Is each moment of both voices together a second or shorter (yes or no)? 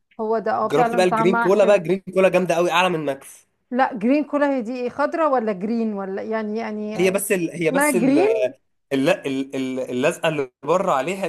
no